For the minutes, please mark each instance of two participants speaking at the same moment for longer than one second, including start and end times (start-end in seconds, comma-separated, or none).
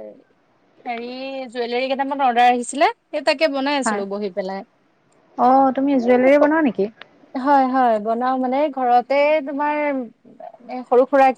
none